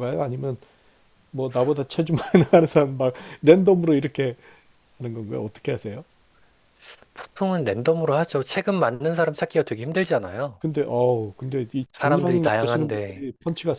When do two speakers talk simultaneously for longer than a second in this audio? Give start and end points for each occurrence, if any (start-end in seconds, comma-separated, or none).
11.9-13.3